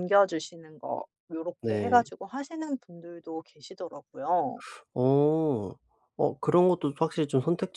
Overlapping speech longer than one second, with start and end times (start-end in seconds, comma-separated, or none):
none